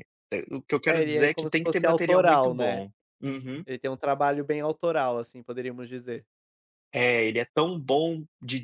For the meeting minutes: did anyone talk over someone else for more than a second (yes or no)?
yes